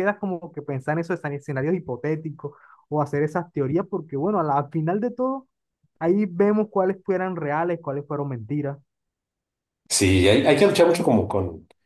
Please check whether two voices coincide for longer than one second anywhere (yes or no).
no